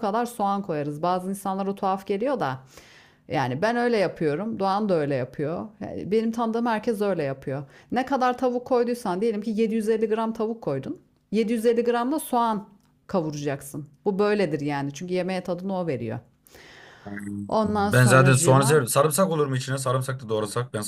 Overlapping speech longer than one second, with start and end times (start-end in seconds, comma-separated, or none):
17.6-18.8